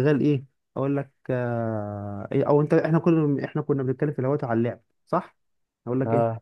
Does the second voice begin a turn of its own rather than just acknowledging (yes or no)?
no